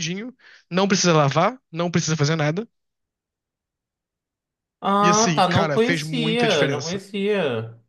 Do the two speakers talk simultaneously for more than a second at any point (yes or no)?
yes